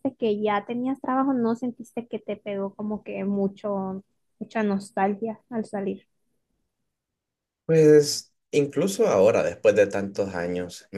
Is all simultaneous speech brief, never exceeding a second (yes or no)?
yes